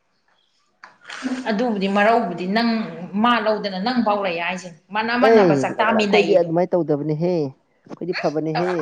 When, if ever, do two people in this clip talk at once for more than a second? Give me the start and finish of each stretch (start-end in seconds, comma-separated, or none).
5.2-6.5